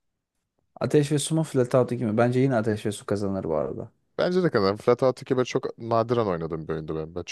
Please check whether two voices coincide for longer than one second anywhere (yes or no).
no